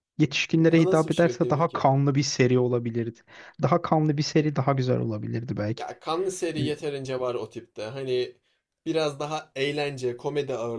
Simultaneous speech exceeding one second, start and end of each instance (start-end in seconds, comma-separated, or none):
0.5-1.8